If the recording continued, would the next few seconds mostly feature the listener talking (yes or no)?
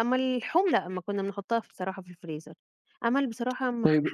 yes